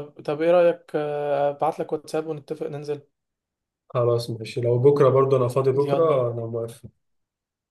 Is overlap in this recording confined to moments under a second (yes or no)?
yes